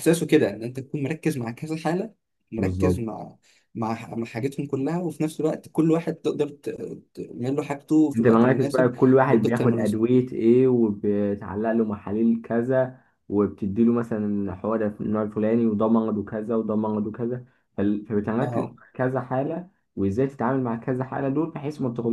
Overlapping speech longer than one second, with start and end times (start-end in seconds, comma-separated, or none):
8.2-10.1